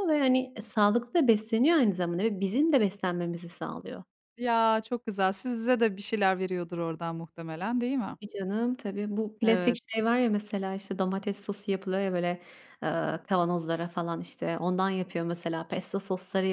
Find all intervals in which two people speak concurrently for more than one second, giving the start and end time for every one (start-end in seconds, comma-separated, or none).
none